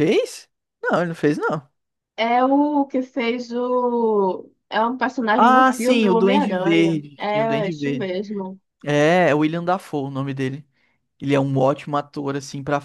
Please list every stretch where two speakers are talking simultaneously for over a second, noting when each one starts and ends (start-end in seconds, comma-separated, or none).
5.3-8.1